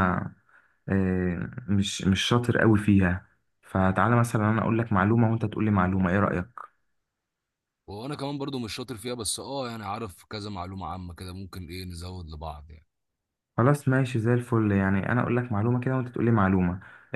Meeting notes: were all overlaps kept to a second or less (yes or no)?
yes